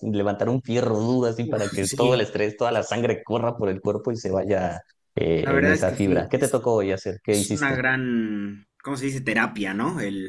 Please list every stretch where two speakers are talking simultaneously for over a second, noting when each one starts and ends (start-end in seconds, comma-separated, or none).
5.4-6.6